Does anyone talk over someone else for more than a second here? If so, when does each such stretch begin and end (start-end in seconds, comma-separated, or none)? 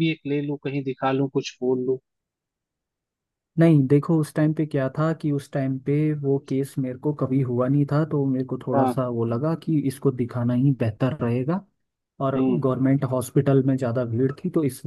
none